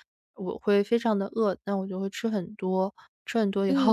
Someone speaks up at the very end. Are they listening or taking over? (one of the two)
taking over